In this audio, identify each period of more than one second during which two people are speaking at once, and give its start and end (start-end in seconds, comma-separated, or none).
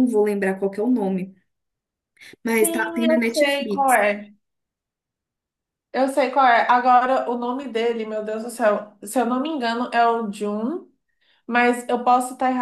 2.6-4.0